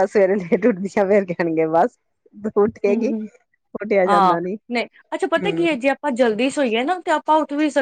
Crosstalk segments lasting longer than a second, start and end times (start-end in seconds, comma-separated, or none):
none